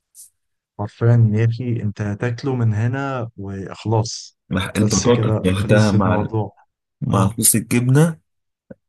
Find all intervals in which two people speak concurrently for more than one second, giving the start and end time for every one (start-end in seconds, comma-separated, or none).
4.8-6.3